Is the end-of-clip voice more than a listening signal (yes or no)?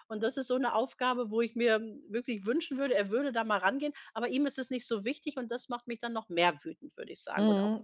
yes